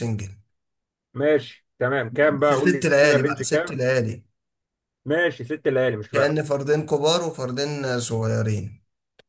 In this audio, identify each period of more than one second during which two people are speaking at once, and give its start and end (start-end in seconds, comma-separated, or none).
2.4-3.8